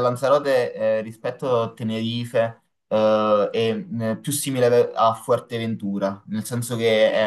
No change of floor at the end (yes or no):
yes